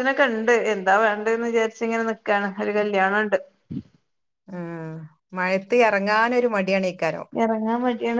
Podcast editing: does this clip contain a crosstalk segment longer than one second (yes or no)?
no